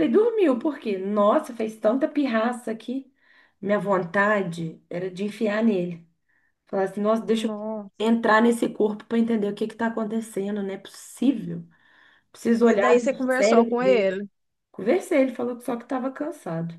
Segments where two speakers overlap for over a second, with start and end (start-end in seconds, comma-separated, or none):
12.6-14.1